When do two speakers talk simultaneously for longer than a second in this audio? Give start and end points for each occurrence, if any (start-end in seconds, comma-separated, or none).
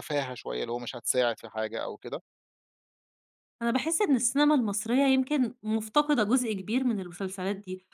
none